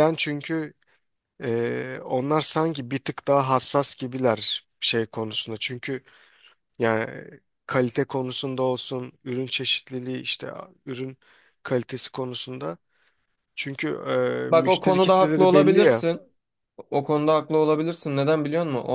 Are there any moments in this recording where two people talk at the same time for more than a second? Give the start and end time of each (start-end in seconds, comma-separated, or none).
14.5-16.0